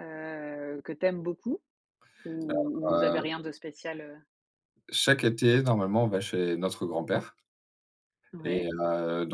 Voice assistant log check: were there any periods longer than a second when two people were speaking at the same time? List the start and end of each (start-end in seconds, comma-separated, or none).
none